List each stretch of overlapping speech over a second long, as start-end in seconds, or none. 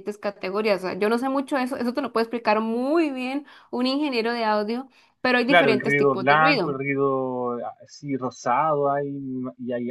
5.4-6.8